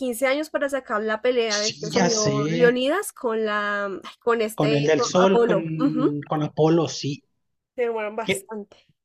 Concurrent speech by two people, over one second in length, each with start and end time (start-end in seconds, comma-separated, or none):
1.6-2.8, 4.5-6.2